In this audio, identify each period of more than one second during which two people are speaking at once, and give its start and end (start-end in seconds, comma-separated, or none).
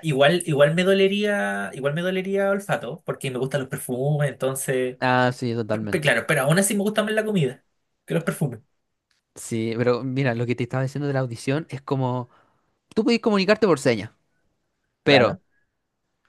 none